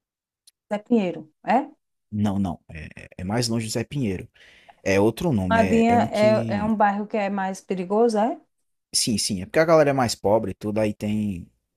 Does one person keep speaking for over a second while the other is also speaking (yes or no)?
yes